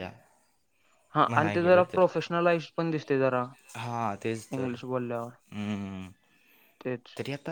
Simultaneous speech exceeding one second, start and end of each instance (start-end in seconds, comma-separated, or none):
none